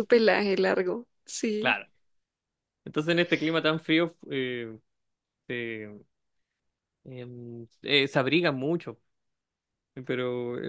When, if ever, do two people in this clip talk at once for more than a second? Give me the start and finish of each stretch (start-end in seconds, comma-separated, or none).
none